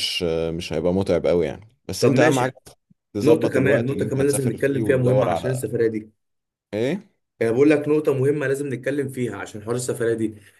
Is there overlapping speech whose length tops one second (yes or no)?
yes